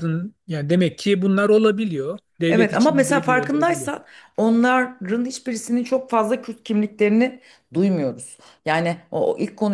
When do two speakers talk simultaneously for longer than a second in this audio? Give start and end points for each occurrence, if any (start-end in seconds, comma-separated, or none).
2.5-3.9